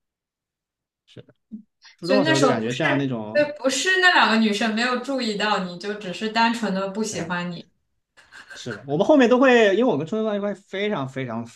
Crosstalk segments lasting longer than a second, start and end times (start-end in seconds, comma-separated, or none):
2.0-3.5